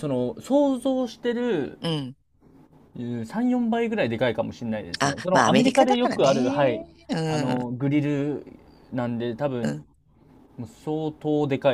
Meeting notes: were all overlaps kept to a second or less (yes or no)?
no